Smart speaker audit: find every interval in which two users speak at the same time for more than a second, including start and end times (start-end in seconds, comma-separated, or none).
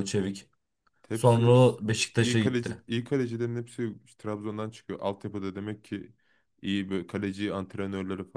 1.1-2.8